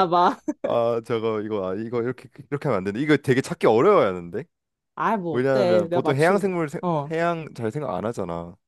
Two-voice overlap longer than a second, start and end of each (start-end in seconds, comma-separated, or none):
5.3-7.1